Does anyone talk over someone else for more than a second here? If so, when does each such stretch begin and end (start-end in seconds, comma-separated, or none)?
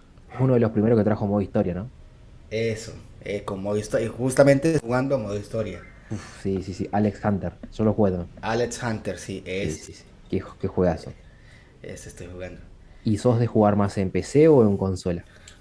none